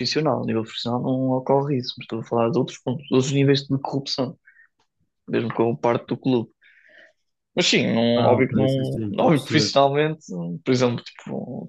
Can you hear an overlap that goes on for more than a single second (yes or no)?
yes